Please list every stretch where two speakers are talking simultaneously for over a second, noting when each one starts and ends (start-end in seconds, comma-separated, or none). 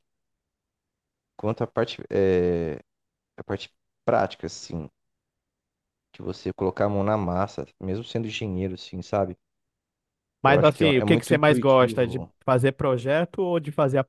10.4-12.3